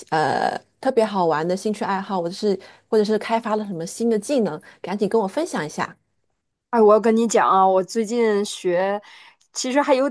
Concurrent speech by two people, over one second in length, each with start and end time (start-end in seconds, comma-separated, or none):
none